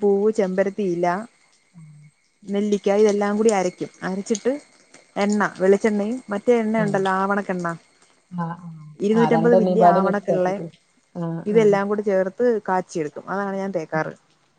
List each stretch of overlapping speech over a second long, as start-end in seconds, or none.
9.2-10.6